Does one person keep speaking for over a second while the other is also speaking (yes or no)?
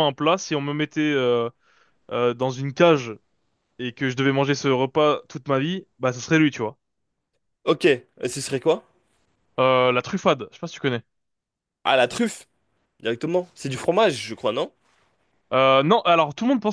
no